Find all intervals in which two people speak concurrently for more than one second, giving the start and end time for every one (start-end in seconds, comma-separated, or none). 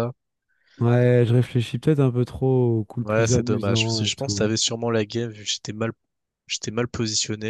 3.0-4.5